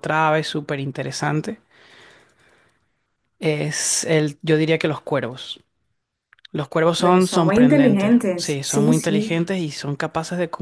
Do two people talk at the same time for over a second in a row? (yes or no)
yes